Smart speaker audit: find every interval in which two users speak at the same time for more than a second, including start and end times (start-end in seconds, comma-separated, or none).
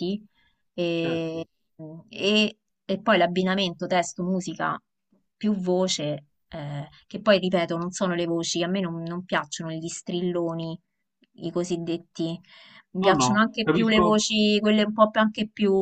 13.0-14.3